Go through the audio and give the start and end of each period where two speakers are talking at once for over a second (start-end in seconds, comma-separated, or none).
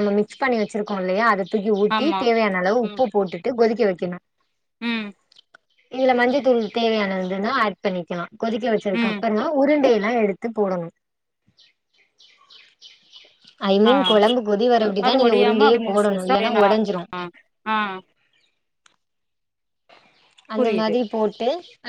15.1-16.7